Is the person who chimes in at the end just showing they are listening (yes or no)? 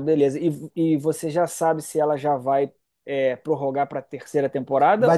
no